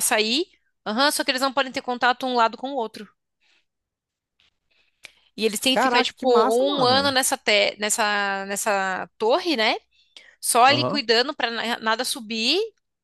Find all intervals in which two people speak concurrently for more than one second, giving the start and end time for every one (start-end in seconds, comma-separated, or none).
5.7-7.2